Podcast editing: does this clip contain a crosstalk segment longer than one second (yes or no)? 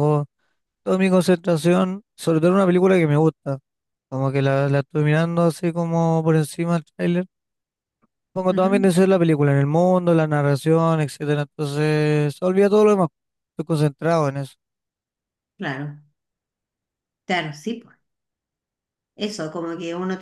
no